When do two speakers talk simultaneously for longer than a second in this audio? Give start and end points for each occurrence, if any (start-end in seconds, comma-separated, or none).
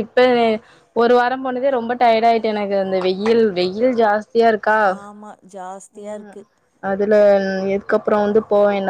none